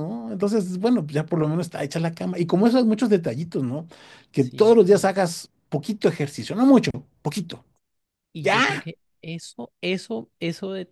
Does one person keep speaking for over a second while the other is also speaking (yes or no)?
no